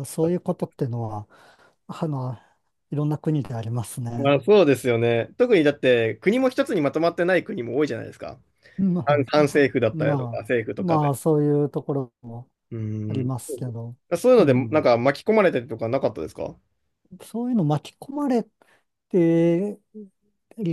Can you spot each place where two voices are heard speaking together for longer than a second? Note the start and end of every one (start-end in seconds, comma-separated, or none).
9.0-11.1